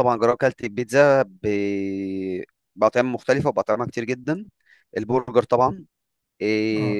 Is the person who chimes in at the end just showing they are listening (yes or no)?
yes